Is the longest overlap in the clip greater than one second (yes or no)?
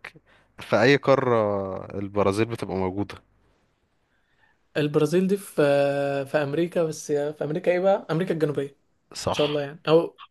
no